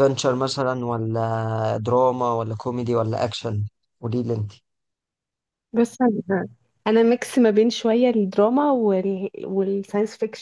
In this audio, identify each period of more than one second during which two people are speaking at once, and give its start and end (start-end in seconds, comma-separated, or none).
none